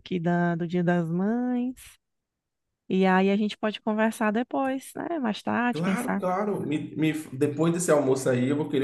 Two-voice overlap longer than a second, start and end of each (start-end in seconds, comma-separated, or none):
none